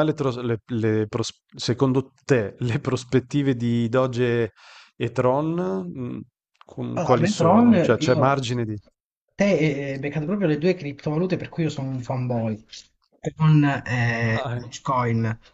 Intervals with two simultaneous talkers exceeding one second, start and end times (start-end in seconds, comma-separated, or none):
6.9-8.4